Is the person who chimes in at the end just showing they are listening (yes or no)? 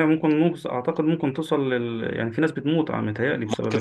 no